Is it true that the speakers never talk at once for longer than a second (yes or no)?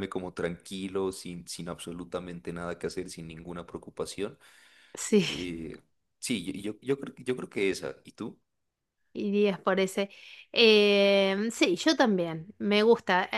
yes